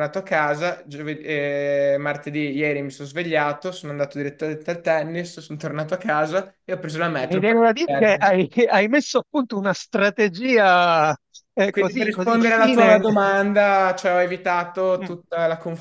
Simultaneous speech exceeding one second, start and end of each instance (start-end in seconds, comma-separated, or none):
11.7-13.0